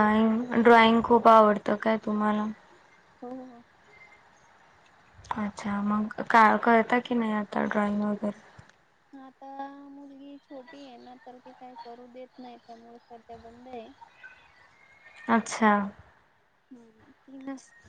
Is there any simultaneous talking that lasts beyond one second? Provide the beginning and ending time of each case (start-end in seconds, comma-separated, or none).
none